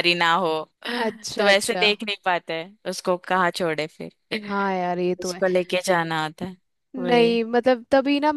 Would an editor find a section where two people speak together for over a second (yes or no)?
no